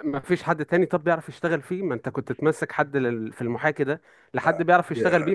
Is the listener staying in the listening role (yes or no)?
no